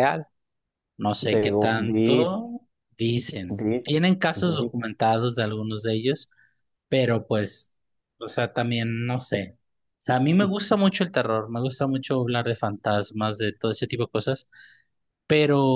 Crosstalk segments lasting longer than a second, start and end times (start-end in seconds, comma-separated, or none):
1.2-2.4